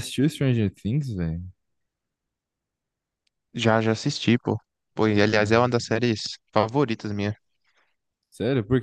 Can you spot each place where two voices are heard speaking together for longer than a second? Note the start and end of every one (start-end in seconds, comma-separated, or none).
none